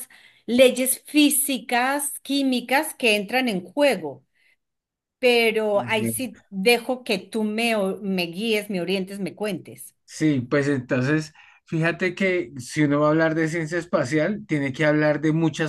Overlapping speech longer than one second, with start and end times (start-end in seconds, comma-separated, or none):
none